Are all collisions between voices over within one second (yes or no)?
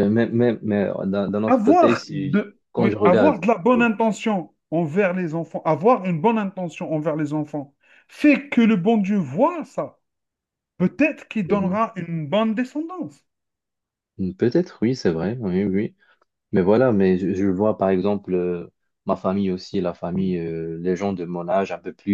no